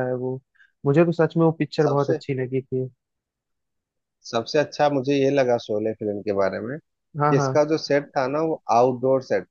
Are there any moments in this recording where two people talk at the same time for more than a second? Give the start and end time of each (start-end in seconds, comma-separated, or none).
none